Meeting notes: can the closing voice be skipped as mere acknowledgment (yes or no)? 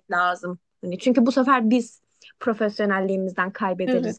no